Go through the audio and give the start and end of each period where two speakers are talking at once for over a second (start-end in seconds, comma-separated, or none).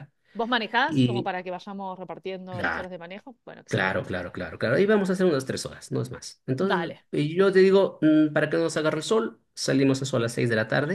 none